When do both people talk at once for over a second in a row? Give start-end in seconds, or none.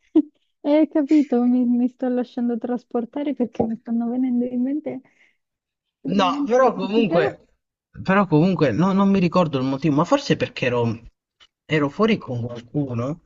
6.1-7.3